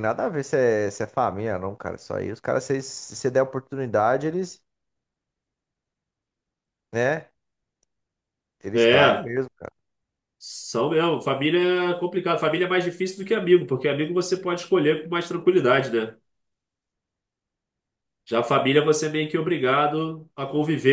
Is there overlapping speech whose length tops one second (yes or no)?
no